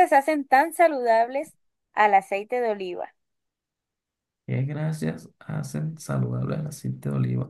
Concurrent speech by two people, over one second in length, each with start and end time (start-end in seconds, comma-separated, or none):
none